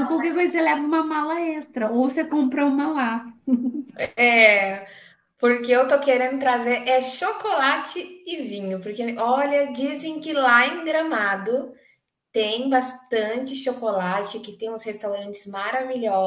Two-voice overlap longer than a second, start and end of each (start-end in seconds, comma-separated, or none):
none